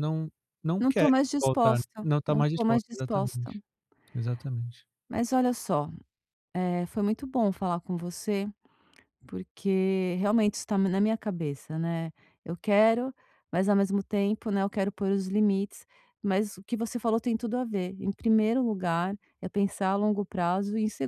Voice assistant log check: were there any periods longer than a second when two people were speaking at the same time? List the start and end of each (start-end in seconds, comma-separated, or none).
0.8-3.5